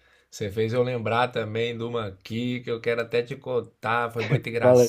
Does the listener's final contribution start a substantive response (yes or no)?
no